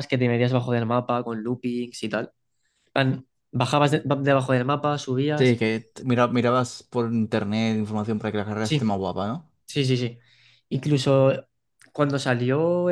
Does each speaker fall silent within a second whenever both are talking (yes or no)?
yes